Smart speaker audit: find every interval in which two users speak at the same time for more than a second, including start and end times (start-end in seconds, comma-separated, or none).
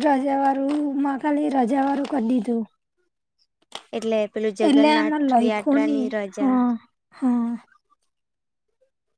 4.7-6.6